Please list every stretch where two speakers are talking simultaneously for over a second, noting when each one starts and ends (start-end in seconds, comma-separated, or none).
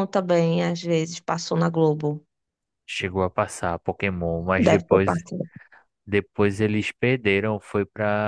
none